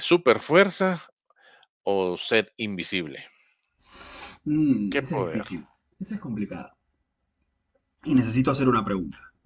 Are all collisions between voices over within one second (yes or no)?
yes